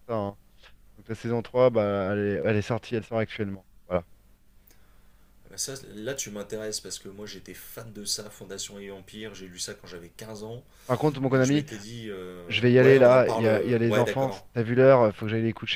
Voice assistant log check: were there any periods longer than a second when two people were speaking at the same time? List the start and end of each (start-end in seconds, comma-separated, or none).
12.5-14.5